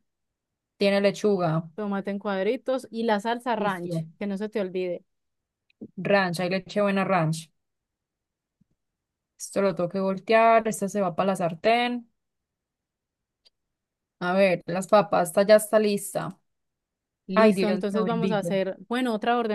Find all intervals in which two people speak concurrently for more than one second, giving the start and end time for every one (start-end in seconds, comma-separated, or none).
17.3-18.5